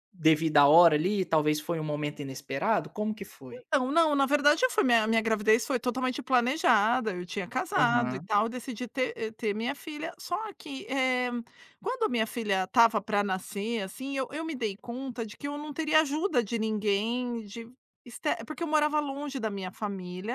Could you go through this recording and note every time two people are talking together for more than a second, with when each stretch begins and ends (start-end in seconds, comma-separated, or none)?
none